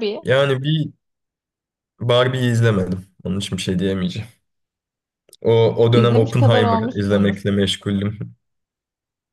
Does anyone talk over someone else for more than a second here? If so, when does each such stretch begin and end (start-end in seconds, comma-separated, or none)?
5.9-7.3